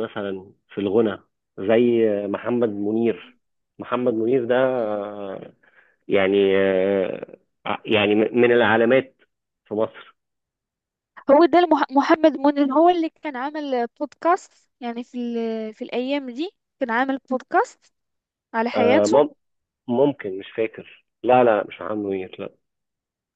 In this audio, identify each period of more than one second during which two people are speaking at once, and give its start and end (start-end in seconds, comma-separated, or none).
none